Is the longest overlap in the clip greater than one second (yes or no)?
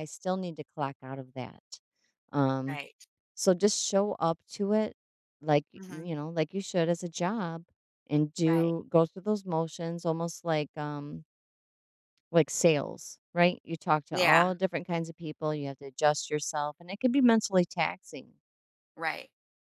no